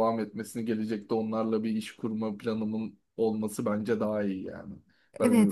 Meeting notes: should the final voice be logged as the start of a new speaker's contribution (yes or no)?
yes